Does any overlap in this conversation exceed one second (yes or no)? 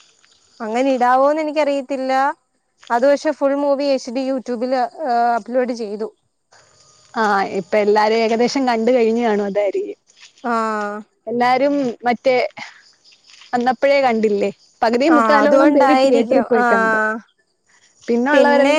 yes